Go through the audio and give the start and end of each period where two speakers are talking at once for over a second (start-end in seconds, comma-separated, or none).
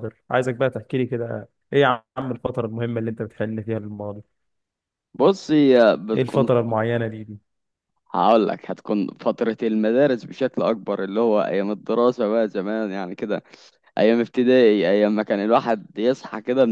none